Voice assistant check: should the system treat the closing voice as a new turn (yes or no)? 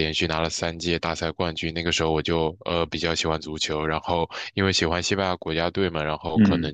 no